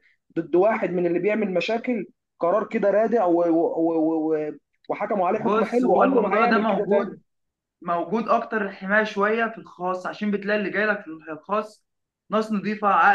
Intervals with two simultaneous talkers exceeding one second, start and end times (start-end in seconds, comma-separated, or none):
5.3-7.2